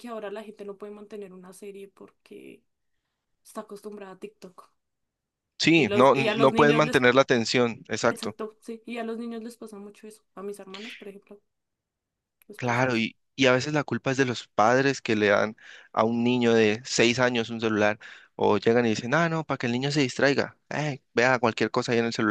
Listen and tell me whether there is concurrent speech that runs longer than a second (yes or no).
yes